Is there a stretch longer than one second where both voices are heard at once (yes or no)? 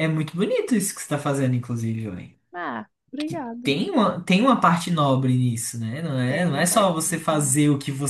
yes